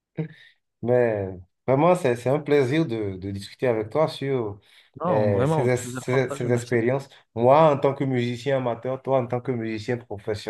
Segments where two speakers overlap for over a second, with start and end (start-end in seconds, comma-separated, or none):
5.1-6.8